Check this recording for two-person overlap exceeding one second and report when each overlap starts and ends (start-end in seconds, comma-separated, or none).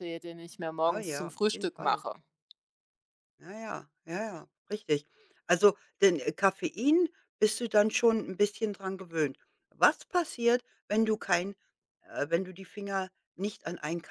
0.8-2.0